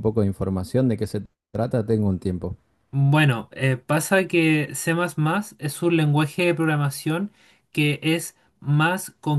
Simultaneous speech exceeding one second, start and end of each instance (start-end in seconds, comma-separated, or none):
none